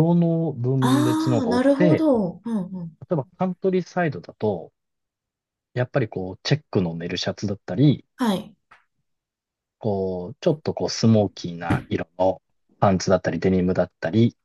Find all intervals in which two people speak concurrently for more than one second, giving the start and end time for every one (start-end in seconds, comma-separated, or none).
0.8-2.1